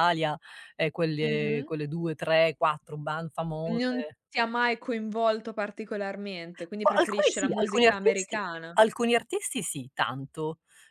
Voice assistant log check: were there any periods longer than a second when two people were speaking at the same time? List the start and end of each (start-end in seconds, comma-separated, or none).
6.8-8.8